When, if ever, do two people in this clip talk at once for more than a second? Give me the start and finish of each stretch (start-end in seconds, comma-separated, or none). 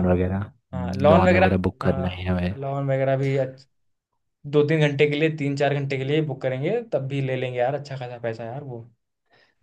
0.7-2.5